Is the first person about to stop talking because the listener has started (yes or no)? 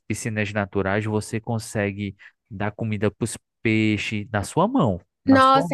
yes